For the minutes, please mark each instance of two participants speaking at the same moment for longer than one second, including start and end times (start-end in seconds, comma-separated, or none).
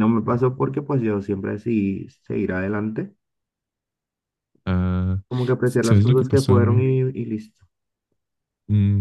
5.6-6.8